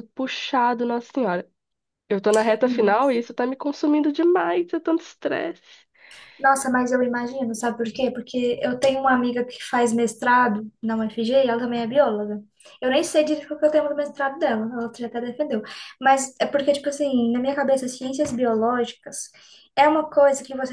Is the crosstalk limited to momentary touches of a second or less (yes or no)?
yes